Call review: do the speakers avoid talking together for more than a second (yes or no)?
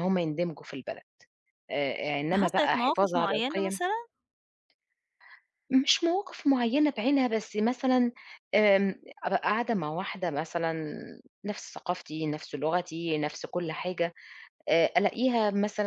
no